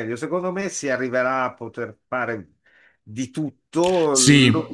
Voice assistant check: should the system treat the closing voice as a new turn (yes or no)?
no